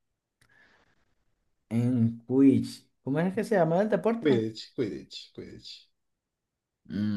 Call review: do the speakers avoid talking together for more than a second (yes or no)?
yes